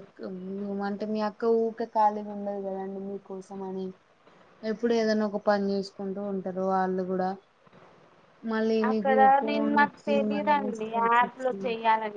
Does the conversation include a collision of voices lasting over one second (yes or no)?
yes